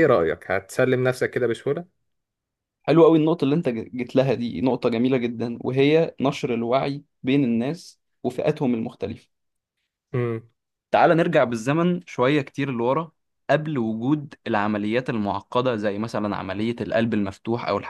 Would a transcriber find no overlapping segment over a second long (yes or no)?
yes